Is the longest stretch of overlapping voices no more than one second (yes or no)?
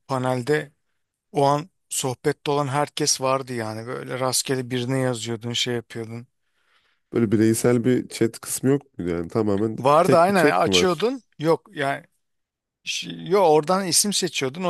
no